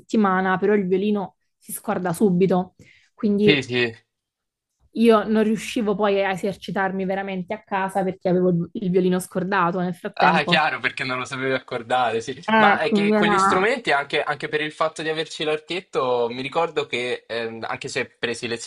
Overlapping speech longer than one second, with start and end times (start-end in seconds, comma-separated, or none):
12.5-13.7